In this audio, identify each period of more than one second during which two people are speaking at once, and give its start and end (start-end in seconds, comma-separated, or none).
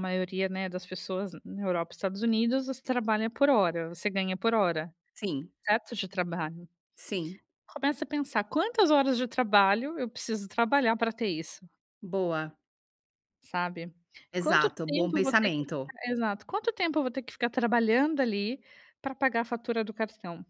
14.4-15.9